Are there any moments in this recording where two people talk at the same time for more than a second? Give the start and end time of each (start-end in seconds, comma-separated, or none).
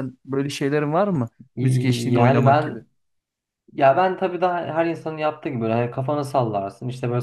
1.6-2.8